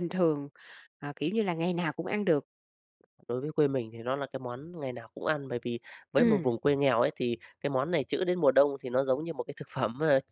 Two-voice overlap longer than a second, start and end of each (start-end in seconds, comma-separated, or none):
none